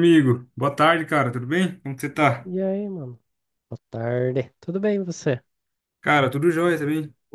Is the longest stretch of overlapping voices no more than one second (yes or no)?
yes